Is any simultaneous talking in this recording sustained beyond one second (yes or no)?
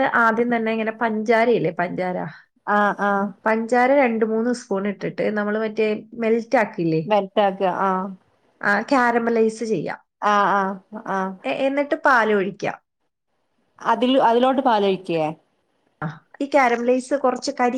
no